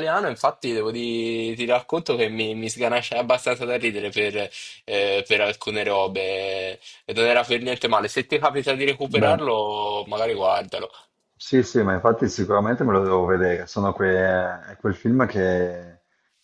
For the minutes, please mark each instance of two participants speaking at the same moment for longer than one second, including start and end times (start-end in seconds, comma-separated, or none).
none